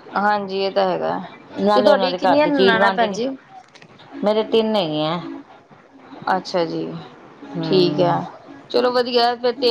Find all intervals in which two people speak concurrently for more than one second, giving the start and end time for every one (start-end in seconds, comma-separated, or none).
1.7-3.2